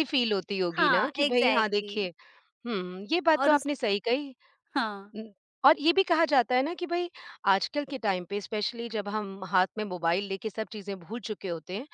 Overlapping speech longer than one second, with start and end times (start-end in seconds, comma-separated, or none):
0.7-2.0